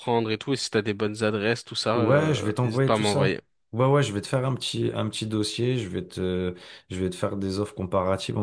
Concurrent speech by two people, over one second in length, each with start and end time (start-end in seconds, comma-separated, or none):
1.9-3.4